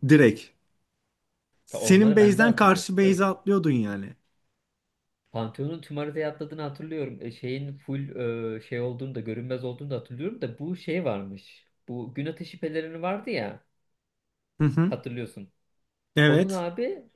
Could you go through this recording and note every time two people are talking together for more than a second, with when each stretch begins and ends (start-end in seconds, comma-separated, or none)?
1.7-3.2